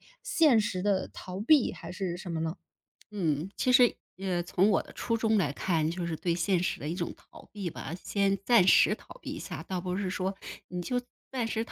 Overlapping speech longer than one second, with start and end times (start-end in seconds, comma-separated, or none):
none